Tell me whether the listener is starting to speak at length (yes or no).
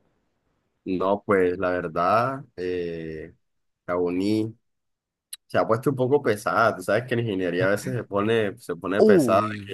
no